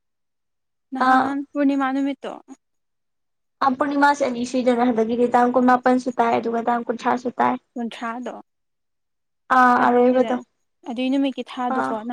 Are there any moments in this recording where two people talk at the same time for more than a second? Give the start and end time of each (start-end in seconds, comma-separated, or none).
none